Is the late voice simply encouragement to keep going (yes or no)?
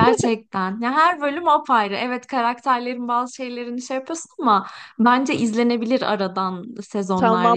no